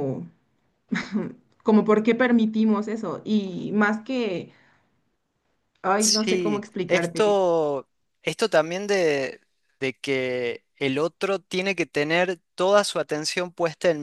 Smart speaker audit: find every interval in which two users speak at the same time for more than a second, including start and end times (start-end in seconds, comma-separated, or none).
6.0-7.4